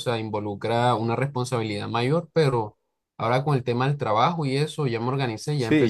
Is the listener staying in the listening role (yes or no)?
no